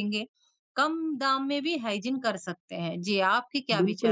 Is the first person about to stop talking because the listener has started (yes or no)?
yes